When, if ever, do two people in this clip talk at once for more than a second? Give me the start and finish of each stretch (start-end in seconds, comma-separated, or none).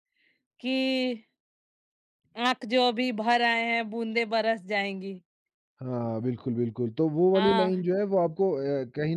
none